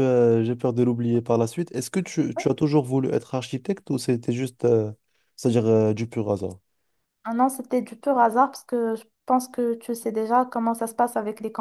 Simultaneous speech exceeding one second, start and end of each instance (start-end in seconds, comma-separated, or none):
none